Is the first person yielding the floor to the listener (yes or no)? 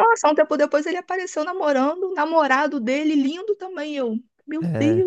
yes